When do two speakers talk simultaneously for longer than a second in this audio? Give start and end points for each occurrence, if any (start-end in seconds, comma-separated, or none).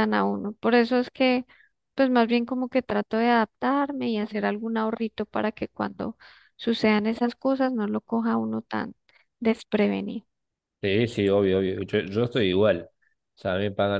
none